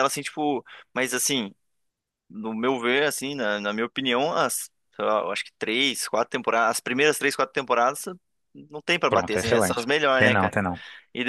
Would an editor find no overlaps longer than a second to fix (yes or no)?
no